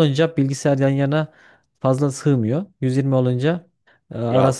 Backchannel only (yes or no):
yes